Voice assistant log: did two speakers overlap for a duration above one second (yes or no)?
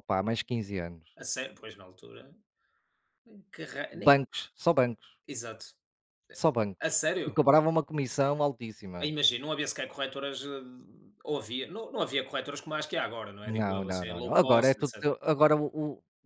yes